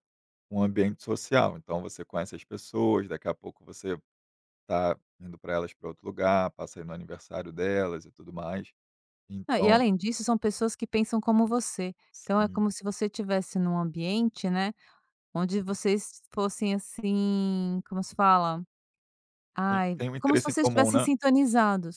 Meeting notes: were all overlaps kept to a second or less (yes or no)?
no